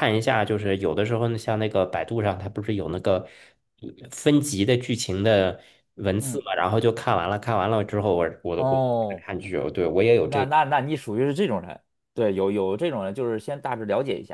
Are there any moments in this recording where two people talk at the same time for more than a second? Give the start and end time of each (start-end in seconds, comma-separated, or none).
none